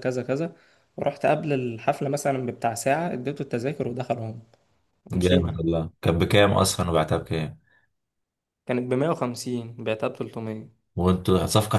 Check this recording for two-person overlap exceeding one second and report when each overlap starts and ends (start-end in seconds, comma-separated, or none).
none